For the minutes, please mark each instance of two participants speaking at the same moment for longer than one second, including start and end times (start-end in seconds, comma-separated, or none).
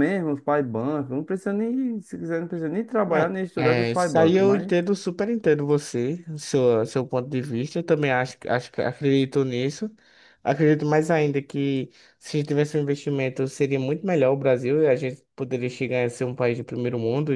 3.0-4.7